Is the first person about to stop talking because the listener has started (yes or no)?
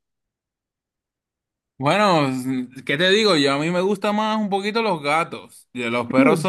no